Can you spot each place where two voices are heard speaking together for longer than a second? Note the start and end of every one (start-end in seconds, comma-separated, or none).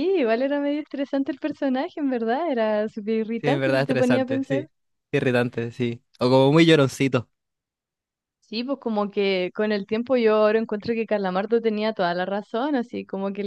3.4-4.7